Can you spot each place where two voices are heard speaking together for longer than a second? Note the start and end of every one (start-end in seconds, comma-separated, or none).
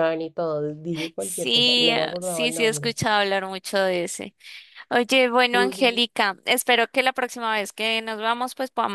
1.2-3.0